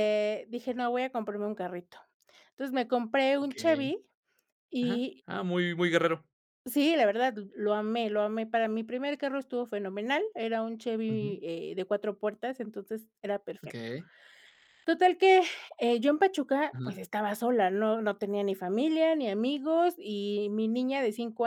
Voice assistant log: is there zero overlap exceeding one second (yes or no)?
yes